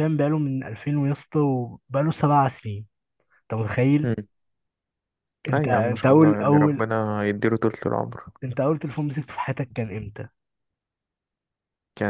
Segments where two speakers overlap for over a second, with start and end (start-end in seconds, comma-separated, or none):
5.5-6.8